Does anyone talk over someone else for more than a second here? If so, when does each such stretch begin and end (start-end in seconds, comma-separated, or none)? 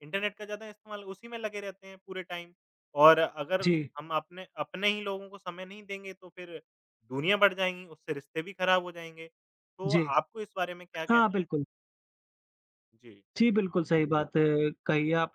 none